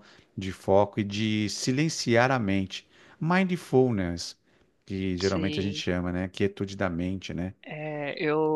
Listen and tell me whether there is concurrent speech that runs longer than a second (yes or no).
no